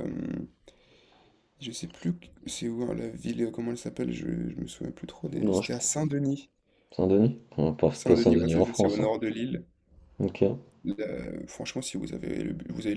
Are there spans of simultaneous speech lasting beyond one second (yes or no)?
yes